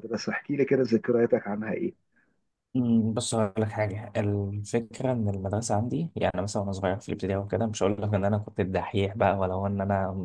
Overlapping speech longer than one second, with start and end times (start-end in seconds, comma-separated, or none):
none